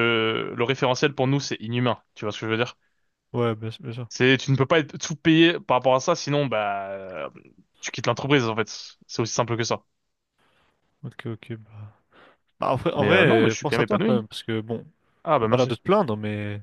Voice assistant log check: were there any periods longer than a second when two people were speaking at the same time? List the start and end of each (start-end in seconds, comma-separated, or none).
13.0-14.3